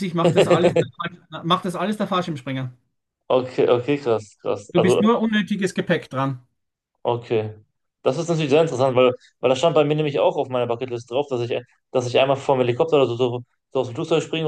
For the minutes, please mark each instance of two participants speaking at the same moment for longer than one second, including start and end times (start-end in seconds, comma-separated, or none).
none